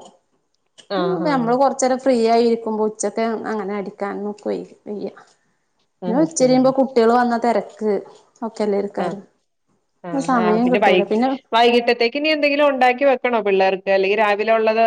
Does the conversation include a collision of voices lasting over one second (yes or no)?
no